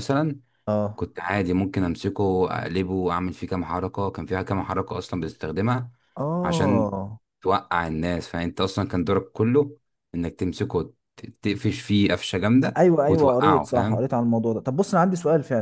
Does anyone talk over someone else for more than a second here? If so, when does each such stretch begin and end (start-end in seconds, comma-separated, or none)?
12.8-14.1